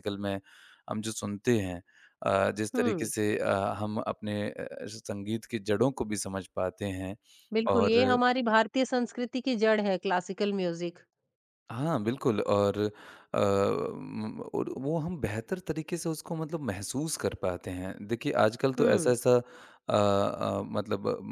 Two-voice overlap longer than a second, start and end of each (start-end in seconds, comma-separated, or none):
none